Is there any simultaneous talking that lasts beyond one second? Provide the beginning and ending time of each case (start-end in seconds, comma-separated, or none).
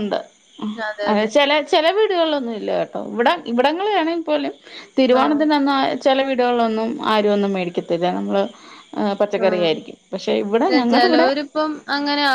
9.4-11.3